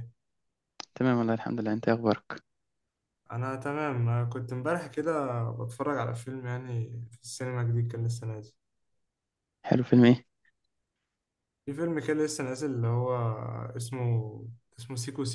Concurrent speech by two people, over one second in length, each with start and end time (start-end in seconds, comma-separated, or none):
none